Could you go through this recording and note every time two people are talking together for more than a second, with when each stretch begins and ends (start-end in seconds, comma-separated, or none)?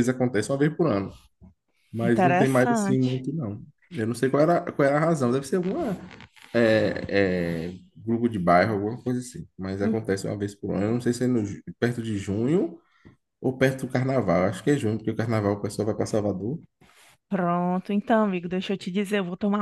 2.0-3.2